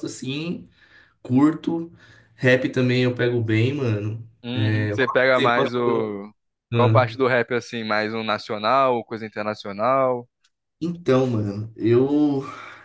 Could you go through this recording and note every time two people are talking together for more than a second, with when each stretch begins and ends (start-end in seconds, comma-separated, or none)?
none